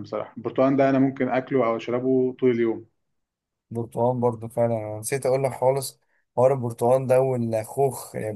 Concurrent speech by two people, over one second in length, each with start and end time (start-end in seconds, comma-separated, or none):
none